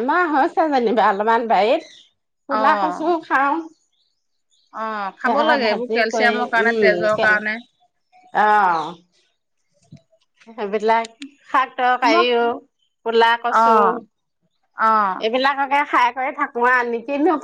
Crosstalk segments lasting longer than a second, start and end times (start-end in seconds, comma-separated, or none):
5.2-7.3